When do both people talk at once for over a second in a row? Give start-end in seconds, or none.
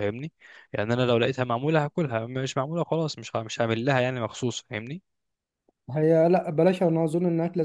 none